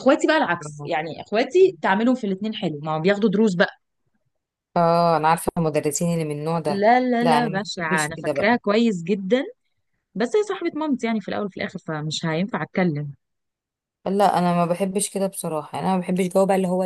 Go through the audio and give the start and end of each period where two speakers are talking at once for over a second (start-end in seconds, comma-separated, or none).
6.7-8.6